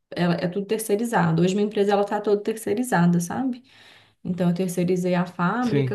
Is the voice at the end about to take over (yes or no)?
no